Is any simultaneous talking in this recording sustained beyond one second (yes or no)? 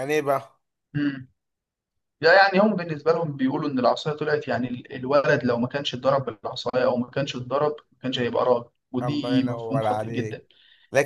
yes